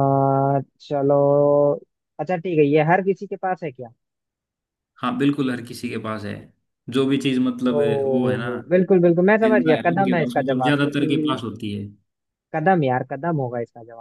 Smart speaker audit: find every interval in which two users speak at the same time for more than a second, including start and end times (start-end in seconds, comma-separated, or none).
9.4-11.4